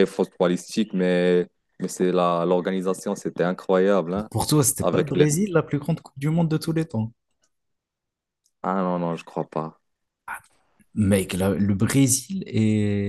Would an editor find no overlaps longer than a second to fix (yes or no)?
yes